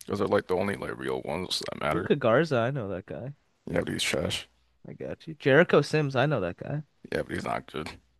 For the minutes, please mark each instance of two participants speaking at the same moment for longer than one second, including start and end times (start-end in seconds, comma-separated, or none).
none